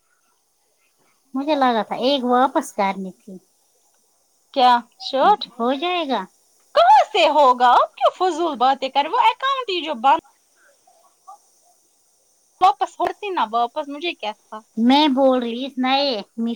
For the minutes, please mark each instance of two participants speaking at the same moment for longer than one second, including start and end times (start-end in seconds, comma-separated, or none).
none